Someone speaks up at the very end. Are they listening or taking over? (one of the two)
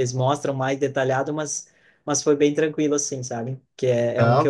listening